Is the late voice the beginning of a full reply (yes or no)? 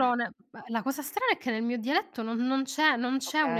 no